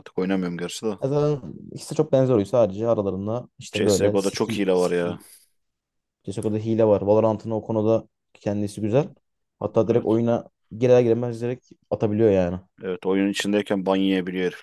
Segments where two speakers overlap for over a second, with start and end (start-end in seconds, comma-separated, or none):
3.7-5.2